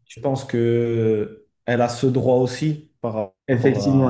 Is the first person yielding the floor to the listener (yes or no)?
yes